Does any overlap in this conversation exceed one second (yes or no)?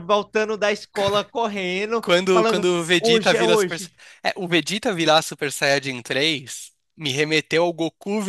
yes